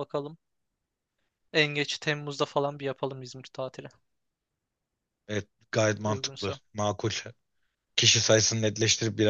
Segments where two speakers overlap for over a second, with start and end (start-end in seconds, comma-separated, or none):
none